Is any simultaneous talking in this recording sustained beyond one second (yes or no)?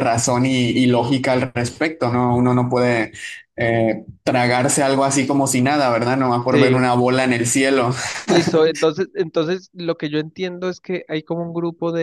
no